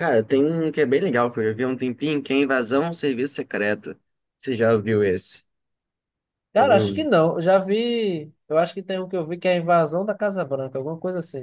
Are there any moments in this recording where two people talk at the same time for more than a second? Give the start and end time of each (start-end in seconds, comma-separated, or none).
none